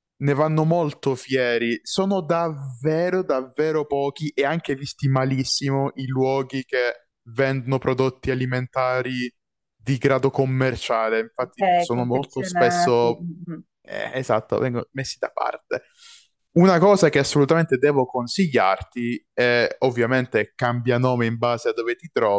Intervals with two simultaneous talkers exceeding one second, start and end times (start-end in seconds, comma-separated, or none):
11.4-13.3